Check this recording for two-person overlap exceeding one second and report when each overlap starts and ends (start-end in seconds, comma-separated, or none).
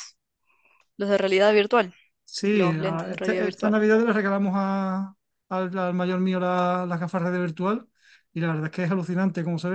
2.5-3.8